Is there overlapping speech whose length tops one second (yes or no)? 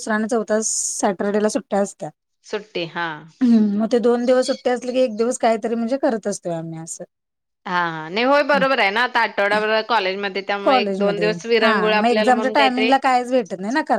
yes